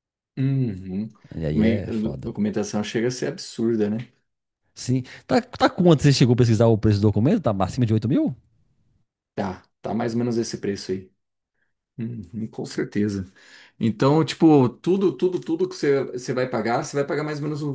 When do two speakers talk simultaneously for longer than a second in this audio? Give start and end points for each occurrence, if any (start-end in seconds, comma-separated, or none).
none